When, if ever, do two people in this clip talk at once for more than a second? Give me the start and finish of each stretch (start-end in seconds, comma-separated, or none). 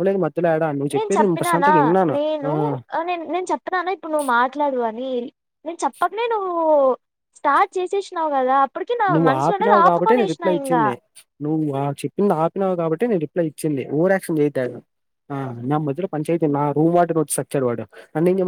9.1-10.8